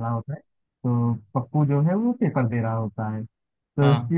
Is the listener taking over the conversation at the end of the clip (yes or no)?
no